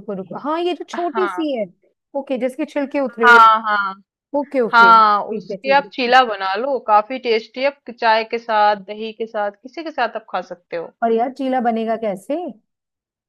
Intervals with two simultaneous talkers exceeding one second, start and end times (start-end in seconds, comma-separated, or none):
4.7-6.2